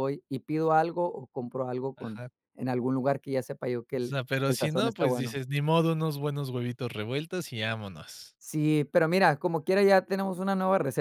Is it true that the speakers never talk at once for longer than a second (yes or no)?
no